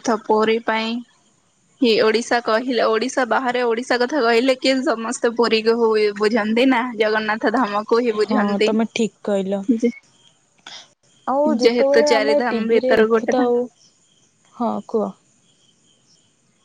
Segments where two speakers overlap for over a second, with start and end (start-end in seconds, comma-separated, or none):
11.6-13.5